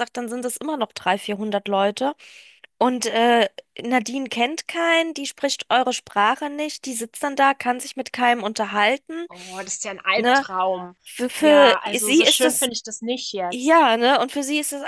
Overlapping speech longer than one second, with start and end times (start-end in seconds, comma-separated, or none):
11.4-12.7